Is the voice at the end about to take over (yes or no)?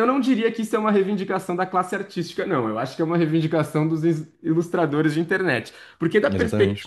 no